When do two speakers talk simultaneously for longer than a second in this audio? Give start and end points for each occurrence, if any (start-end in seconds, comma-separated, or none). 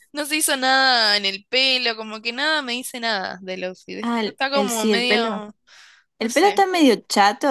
4.0-5.4